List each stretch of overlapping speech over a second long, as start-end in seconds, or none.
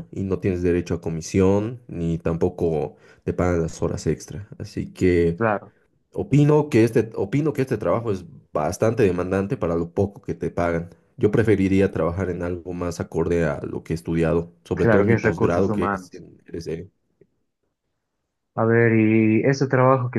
14.7-16.2